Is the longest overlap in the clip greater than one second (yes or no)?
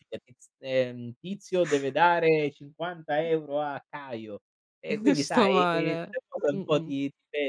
yes